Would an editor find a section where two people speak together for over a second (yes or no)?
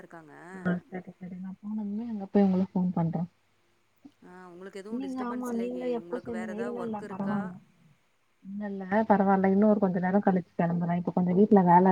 yes